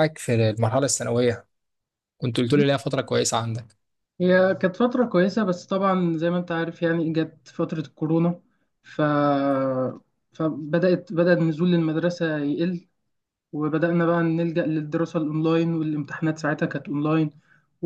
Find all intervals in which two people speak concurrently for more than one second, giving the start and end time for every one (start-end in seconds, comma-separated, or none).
none